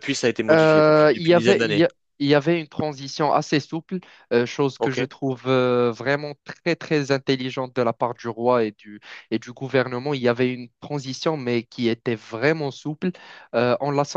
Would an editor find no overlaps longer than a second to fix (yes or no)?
no